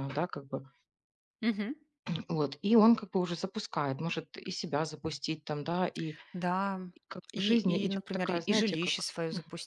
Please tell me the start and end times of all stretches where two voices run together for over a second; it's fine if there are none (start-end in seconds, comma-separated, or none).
7.3-9.1